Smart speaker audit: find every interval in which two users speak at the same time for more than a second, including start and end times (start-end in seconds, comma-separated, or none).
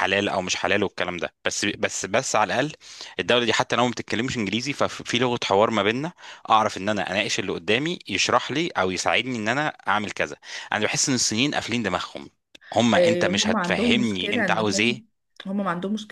12.9-15.1